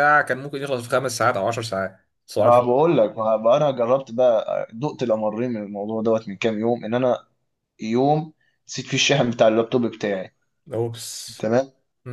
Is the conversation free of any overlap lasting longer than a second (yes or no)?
yes